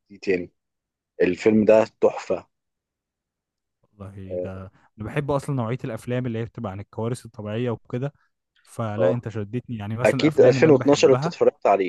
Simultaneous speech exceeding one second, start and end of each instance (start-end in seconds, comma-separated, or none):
10.0-11.3